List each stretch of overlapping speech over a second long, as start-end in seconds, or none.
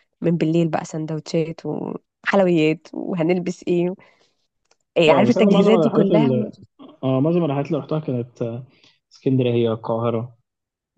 5.1-6.3